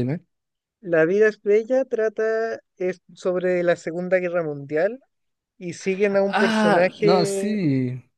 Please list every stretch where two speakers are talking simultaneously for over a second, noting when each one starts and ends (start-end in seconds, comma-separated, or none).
6.2-7.6